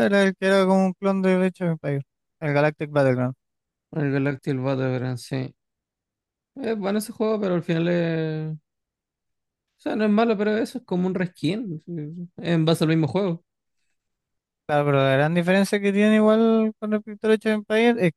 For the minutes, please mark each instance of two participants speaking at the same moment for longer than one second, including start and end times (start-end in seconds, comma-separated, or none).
none